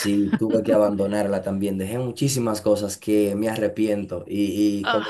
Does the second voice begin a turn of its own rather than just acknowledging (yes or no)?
no